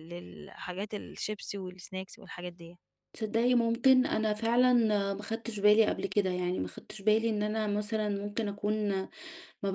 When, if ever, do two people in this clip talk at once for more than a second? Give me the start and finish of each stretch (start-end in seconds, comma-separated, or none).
none